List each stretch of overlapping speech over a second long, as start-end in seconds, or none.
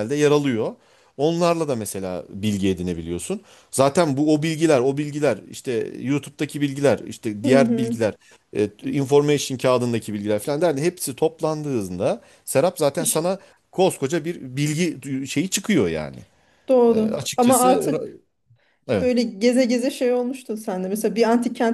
16.9-18.1